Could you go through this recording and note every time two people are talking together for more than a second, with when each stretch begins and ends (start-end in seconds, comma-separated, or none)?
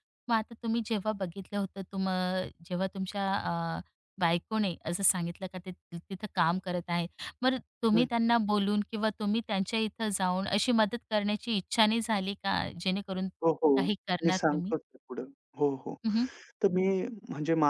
none